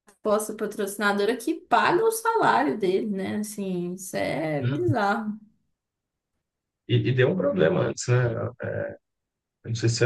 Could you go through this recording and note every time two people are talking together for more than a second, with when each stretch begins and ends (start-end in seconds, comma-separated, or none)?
none